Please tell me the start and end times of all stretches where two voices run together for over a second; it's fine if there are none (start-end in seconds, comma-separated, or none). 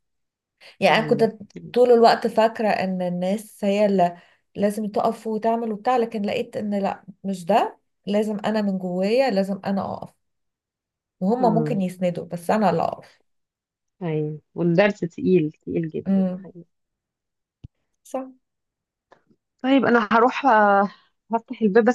none